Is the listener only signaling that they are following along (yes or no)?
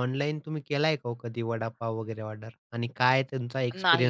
no